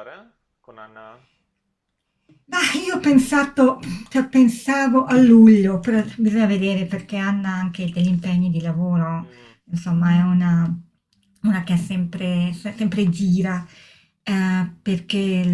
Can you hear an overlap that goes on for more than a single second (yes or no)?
no